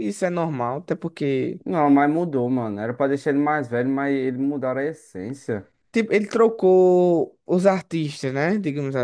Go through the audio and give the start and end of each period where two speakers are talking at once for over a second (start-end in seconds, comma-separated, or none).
none